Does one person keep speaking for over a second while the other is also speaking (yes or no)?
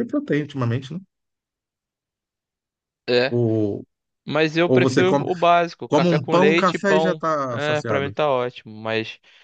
yes